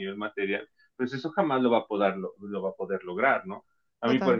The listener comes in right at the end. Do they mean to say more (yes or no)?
no